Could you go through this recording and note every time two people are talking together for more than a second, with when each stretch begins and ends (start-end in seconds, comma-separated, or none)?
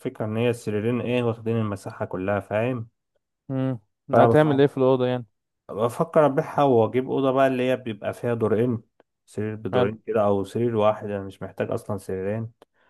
none